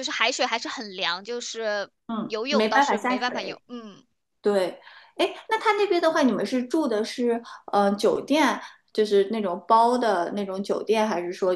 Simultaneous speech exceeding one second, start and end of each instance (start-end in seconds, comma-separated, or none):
2.1-3.6